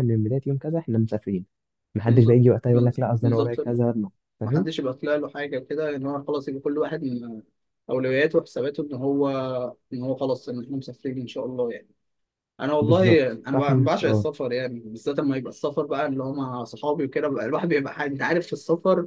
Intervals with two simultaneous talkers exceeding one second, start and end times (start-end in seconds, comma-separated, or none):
12.8-14.3